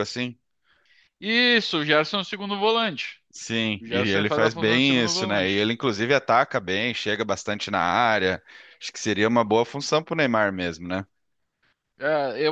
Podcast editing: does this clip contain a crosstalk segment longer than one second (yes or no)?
yes